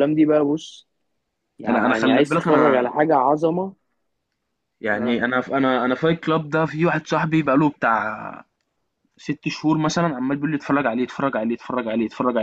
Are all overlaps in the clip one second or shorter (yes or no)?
no